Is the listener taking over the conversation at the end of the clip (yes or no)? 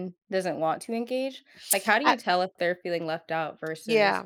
yes